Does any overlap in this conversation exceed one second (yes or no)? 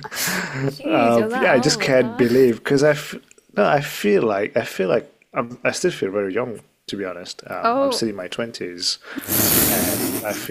yes